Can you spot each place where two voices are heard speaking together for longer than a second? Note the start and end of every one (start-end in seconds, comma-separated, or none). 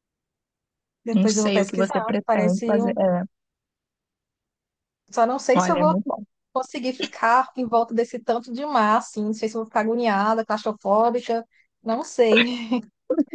1.1-3.0